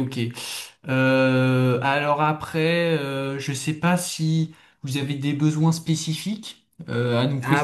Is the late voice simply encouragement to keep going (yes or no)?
no